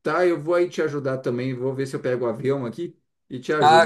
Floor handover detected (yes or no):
yes